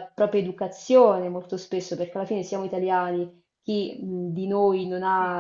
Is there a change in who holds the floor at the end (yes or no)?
no